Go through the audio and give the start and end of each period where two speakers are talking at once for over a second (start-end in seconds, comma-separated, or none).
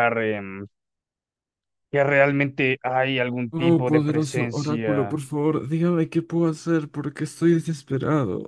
3.5-5.2